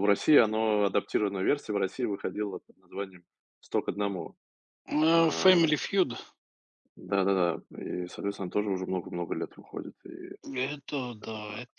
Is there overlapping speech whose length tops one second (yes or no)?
no